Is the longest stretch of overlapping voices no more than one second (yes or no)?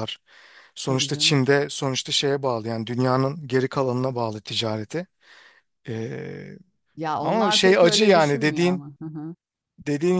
no